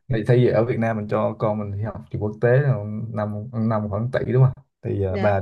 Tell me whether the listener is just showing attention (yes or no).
yes